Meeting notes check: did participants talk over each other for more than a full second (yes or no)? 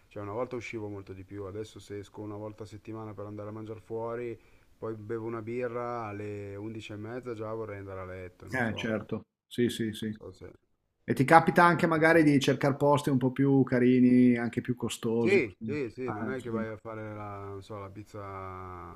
yes